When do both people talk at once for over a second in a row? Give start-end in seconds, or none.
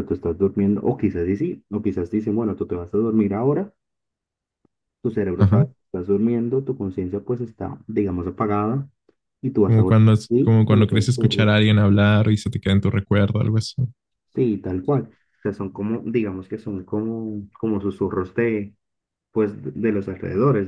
9.7-11.6